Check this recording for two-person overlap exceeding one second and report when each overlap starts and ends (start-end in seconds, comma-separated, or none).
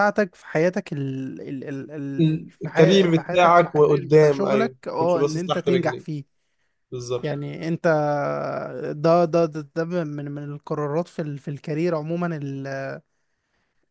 2.3-6.1